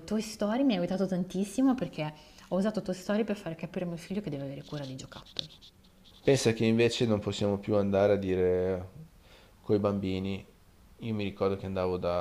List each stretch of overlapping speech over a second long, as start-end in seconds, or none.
none